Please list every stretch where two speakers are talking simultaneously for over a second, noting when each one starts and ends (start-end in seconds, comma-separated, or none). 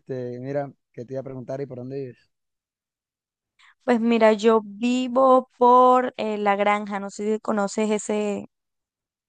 none